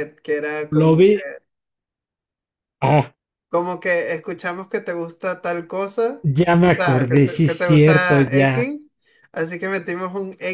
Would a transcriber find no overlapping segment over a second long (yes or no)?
no